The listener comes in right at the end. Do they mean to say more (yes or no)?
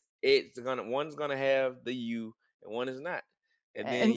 yes